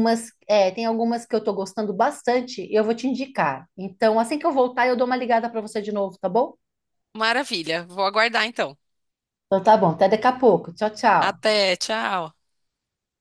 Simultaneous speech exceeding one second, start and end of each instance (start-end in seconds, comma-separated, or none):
none